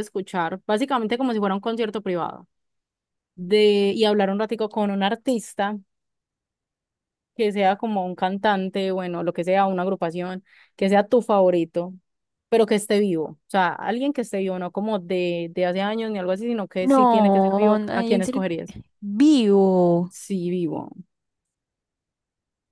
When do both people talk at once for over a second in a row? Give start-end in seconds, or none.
16.8-18.4